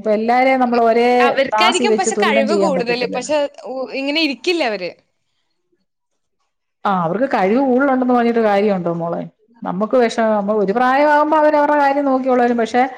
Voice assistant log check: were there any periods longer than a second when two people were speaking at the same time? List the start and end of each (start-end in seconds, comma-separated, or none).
1.5-3.3